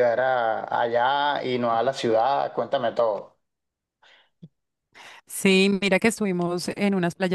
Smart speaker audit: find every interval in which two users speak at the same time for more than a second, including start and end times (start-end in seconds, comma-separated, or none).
none